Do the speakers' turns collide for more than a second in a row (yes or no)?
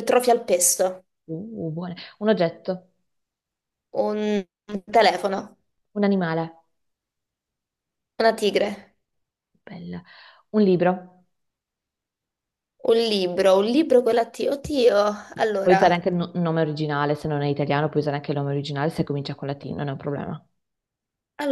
no